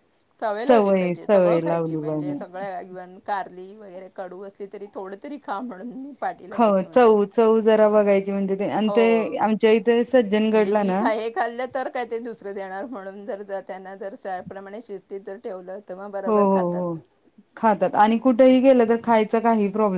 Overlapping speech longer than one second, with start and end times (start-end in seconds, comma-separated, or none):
0.7-2.4